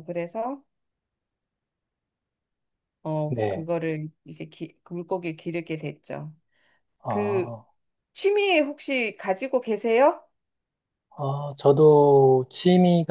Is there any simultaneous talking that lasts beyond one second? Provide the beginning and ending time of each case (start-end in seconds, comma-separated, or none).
none